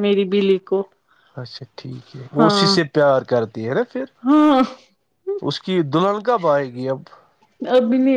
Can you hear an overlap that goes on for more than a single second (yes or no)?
no